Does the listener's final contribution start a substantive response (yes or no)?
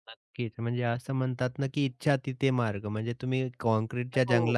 no